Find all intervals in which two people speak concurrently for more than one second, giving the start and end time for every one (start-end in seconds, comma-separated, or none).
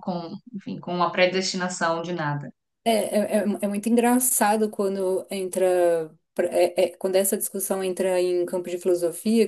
none